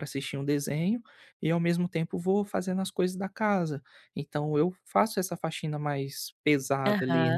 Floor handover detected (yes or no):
yes